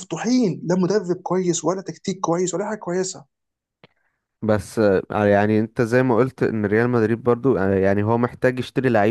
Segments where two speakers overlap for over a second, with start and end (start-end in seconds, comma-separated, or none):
none